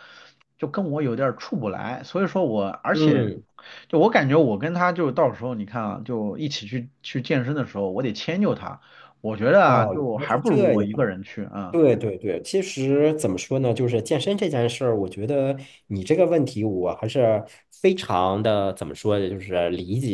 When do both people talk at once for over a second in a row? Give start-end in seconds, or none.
9.7-11.1